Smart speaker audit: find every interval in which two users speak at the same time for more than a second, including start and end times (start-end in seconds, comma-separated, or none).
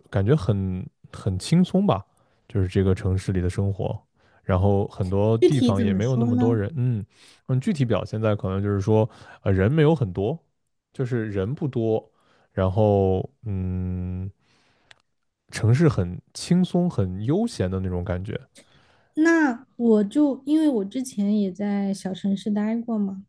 5.4-6.6